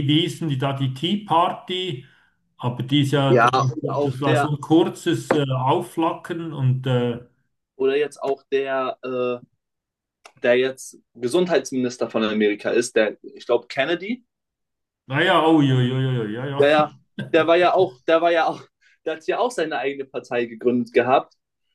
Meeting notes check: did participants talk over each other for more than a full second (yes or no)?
yes